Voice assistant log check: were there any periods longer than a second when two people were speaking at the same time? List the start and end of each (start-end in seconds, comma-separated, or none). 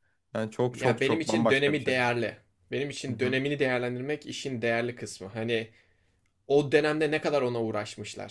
0.7-1.9